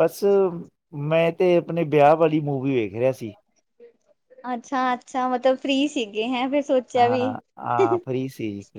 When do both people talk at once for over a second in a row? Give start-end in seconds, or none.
none